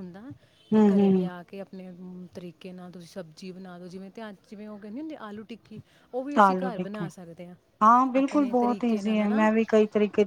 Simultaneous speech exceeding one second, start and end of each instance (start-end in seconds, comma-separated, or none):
8.2-9.5